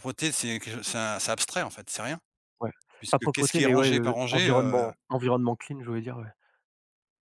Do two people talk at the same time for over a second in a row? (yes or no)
yes